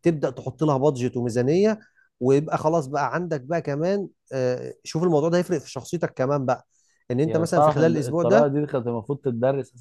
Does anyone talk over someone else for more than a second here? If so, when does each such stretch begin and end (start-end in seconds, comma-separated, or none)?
7.2-8.5